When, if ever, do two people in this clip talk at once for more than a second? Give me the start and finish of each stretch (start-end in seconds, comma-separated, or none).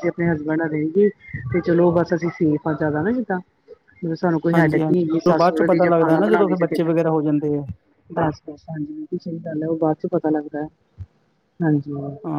4.5-6.8